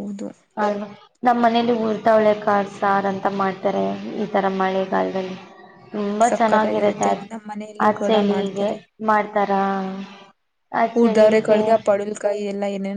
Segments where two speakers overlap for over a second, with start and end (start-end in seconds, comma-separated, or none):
6.3-8.7